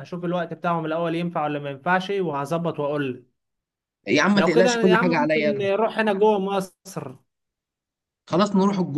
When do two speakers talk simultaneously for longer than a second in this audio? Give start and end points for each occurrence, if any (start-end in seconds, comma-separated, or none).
4.3-5.7